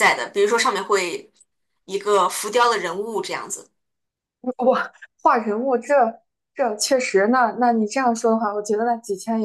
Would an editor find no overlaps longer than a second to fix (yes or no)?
yes